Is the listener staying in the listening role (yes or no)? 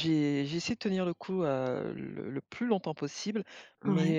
yes